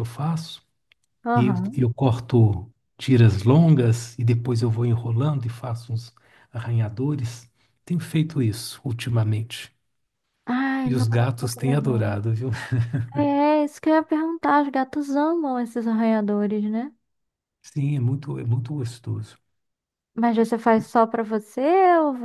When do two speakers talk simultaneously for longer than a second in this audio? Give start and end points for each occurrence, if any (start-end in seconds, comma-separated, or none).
10.8-12.1